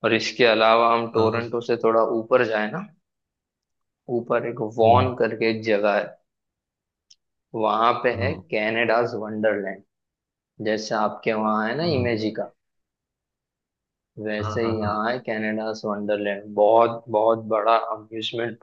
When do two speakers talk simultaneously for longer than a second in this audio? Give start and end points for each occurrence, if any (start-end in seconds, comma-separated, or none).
none